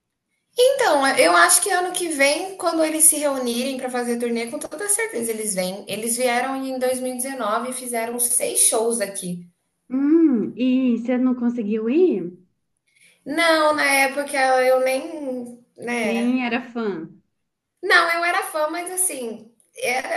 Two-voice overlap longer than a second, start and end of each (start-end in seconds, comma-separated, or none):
none